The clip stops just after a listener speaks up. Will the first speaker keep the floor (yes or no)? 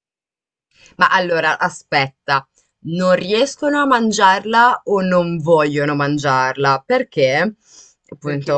yes